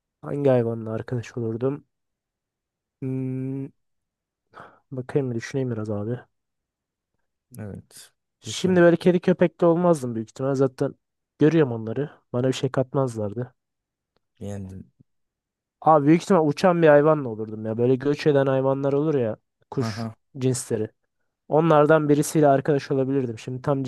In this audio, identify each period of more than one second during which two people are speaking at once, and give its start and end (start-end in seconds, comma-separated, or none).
none